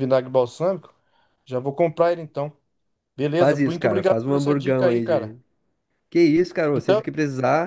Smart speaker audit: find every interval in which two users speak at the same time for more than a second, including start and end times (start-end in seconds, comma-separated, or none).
3.4-5.4